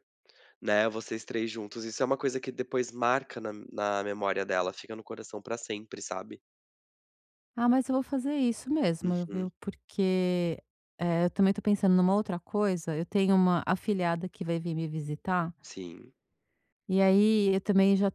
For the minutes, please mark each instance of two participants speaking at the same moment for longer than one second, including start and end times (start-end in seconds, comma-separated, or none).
none